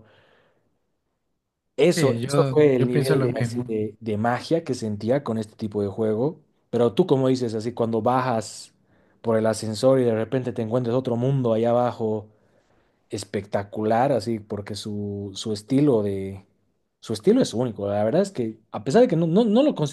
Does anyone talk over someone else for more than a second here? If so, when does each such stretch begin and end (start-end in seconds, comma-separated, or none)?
1.9-3.7